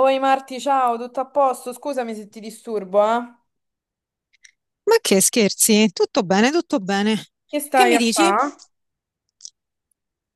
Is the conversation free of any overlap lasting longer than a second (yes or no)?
yes